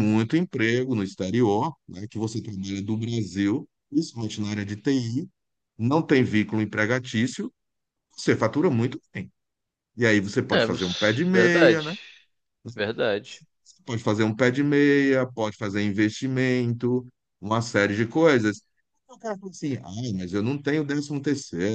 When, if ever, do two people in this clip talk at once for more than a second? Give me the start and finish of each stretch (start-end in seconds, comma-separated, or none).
10.5-11.9